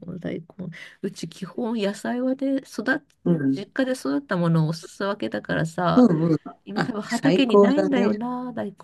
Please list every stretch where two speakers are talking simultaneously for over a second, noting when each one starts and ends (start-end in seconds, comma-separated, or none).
6.8-8.2